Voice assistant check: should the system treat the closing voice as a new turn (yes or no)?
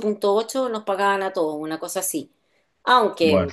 no